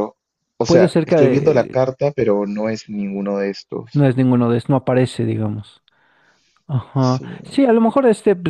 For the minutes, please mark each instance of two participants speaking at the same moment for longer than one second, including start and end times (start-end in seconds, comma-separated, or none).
0.7-1.9